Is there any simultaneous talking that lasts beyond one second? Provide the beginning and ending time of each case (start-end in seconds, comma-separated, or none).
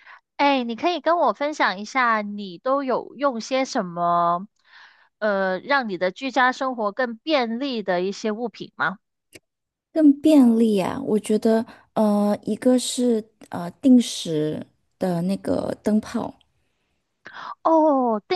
none